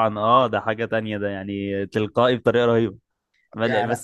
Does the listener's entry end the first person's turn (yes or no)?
no